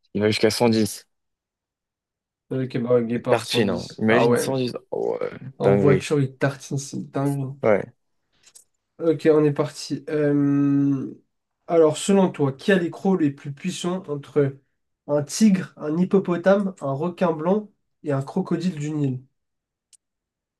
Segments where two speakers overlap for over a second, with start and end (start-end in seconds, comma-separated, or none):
3.1-4.5